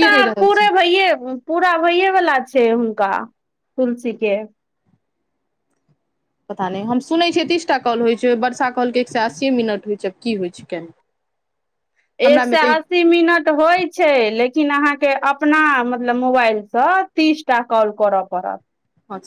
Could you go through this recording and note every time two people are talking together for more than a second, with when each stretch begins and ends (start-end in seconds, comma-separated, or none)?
none